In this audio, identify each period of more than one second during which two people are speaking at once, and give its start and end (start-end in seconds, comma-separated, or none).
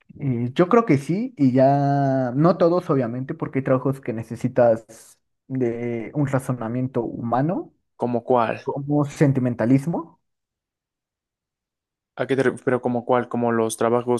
none